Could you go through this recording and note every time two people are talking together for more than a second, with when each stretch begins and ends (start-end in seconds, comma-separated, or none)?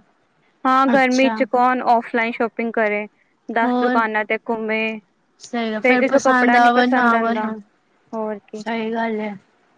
5.8-7.5